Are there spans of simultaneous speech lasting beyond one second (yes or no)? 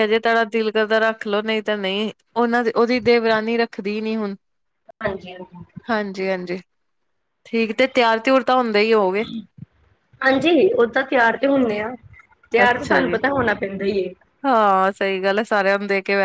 no